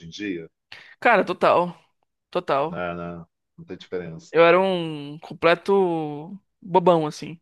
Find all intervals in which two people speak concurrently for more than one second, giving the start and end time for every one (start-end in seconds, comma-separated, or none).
none